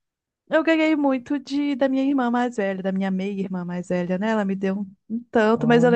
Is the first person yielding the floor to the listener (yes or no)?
no